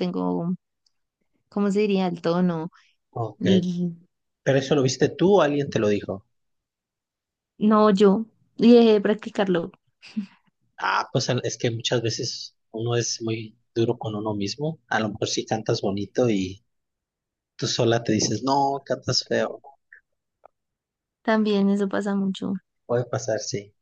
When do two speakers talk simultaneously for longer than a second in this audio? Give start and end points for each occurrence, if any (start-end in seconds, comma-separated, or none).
none